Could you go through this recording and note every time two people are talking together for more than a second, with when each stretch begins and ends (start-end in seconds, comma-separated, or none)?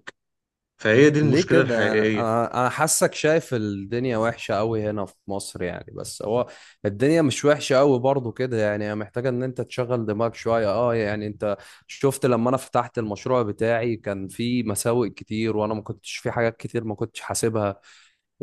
1.2-2.4